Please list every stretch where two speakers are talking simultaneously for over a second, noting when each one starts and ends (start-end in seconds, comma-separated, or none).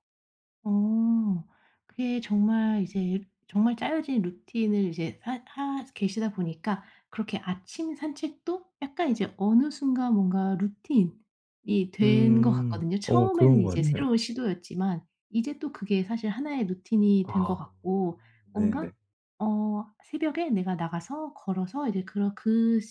12.0-14.1